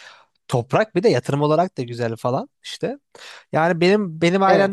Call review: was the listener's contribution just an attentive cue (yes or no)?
yes